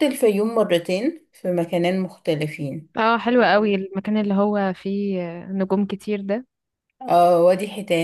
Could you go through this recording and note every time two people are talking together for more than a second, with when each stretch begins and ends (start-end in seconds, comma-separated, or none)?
none